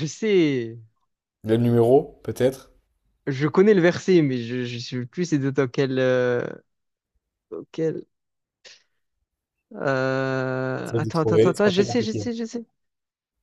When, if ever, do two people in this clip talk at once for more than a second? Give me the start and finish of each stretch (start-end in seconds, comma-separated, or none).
10.8-12.3